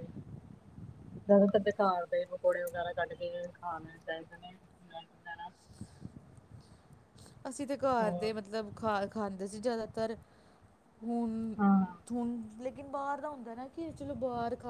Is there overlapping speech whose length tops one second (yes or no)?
no